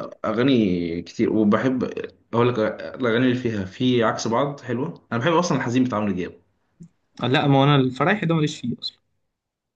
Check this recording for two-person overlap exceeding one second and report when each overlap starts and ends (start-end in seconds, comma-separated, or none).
none